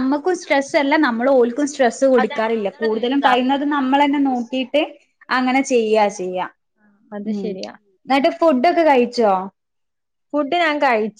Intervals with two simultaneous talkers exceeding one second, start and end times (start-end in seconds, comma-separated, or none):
2.2-4.7